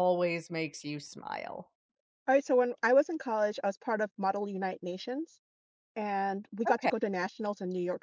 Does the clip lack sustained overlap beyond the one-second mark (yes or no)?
yes